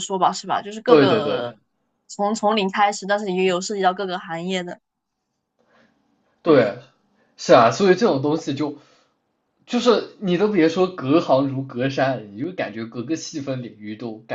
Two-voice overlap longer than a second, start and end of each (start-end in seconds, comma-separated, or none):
none